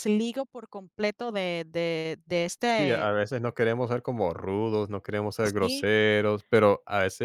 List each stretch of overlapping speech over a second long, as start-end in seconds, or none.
none